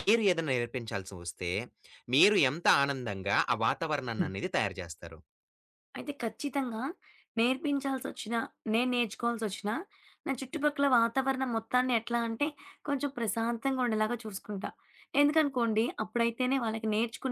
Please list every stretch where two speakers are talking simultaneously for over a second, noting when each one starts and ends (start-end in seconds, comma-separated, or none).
none